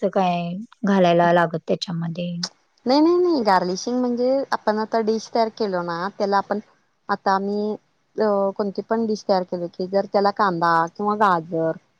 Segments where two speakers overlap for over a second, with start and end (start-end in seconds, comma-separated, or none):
none